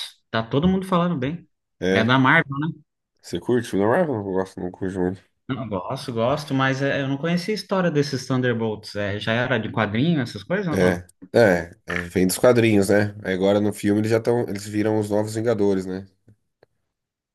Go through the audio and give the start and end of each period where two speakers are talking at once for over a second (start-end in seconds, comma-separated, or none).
none